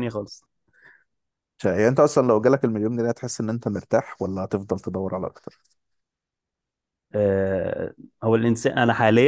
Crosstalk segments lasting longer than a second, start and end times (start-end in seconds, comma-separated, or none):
none